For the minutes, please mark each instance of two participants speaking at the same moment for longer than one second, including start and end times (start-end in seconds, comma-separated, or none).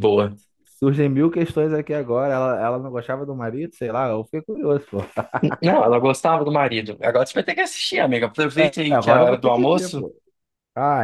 8.5-10.0